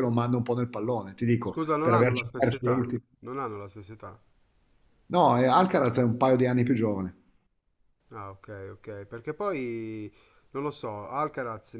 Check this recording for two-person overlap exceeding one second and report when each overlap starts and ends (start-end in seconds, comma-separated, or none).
1.4-3.0